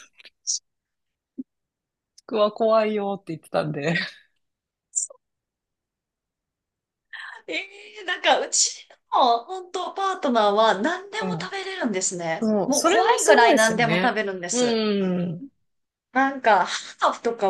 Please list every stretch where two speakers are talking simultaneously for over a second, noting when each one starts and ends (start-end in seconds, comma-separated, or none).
12.4-14.8